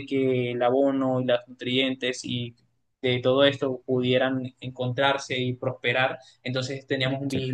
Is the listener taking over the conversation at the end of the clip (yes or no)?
no